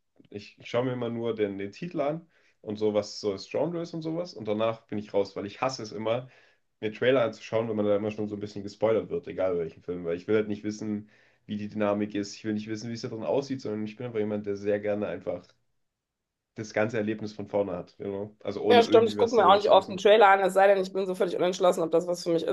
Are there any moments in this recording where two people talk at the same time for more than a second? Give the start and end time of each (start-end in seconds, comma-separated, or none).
18.7-20.1